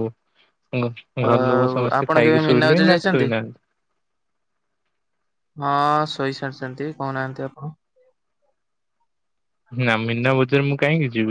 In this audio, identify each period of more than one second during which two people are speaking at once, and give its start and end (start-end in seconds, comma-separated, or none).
1.3-3.3